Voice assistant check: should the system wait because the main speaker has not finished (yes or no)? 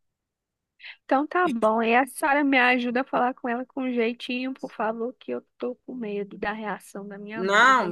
no